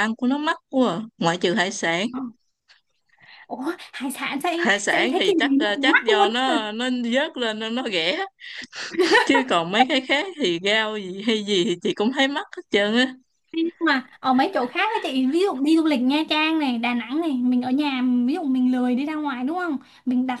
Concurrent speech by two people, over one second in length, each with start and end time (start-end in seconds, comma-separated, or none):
4.5-6.5